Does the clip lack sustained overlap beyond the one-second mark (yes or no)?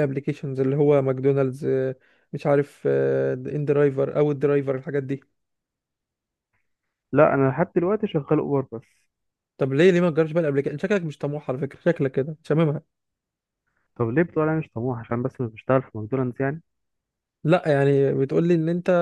yes